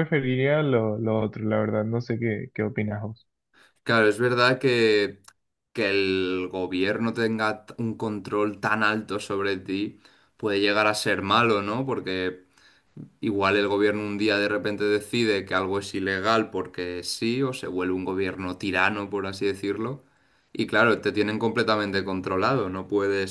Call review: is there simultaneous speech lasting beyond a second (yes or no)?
no